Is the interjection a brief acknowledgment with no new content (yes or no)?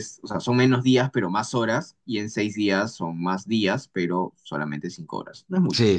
no